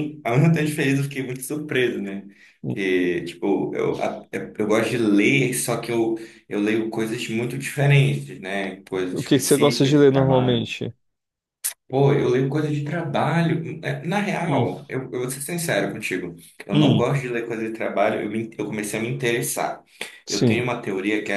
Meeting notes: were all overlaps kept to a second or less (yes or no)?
no